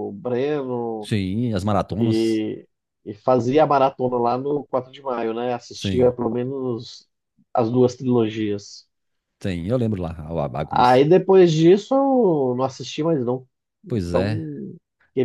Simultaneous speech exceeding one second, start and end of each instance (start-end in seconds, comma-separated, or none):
none